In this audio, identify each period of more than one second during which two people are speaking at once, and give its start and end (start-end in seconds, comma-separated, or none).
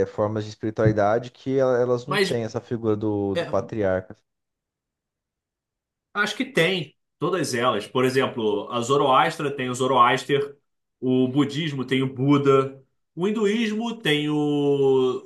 none